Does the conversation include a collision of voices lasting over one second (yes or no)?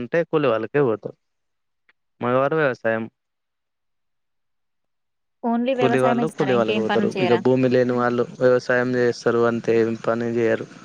yes